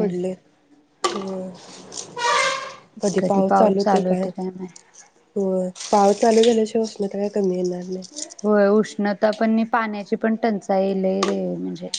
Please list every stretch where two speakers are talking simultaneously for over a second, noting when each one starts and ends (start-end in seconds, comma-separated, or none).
none